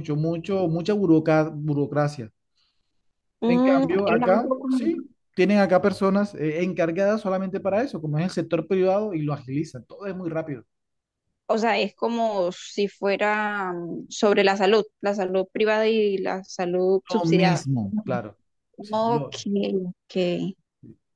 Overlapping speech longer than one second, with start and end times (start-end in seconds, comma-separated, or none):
3.4-4.9